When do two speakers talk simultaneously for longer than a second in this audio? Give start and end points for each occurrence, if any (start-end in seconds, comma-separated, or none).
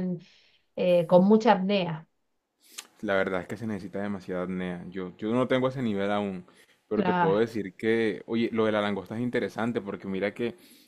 none